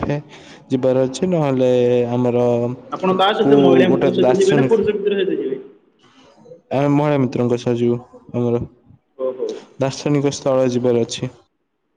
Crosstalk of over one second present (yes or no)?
yes